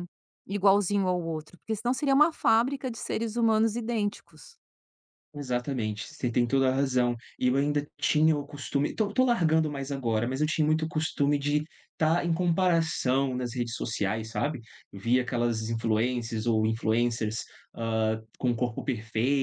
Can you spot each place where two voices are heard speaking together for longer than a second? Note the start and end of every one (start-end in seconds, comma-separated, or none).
none